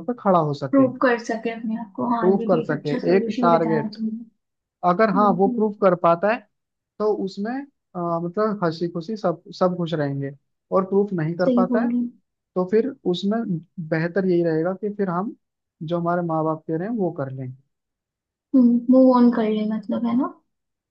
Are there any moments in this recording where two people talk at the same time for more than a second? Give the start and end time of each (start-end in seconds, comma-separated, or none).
2.2-4.0